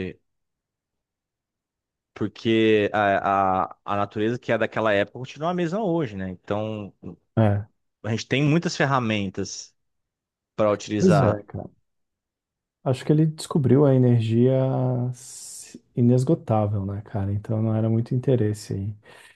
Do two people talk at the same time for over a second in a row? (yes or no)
no